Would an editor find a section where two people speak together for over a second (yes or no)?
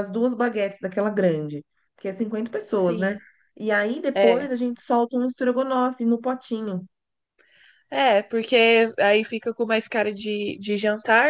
no